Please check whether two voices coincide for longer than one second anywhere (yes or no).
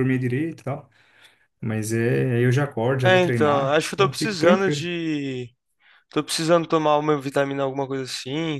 yes